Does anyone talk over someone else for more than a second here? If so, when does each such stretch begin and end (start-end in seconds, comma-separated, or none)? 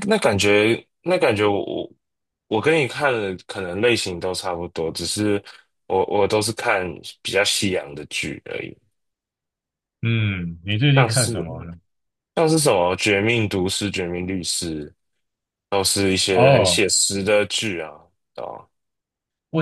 none